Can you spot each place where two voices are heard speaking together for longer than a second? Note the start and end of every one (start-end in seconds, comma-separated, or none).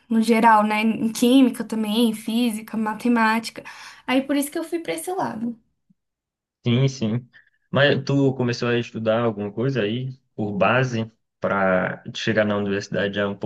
none